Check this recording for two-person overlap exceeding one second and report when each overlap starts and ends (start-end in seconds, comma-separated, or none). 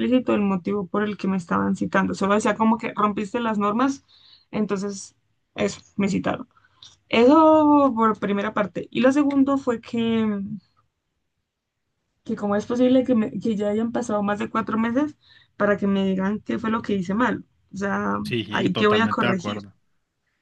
18.2-19.6